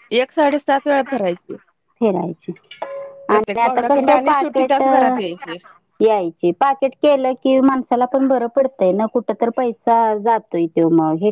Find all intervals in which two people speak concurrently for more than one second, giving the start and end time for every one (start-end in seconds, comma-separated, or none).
3.3-4.8